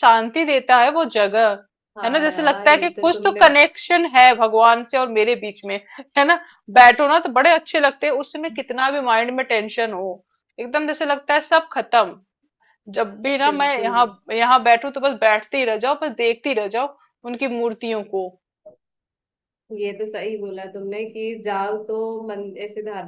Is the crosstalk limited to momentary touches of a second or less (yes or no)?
no